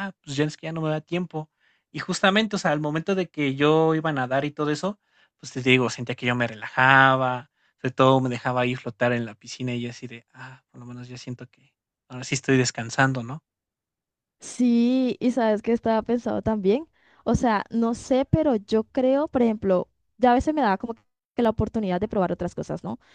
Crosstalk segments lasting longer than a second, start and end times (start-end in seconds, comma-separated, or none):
none